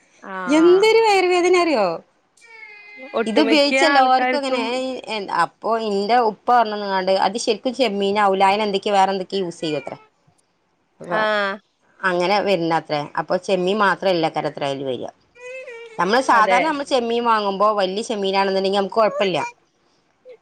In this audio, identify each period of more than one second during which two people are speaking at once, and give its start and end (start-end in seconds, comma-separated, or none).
3.3-4.6